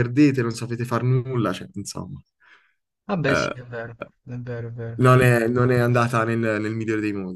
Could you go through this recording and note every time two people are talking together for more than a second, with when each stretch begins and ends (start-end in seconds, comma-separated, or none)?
none